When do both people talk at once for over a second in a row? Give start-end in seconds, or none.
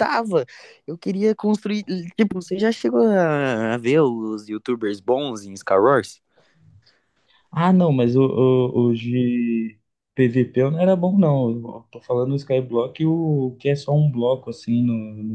none